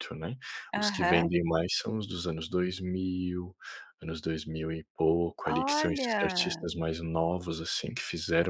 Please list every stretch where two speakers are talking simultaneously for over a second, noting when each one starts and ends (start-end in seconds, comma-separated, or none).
5.5-6.7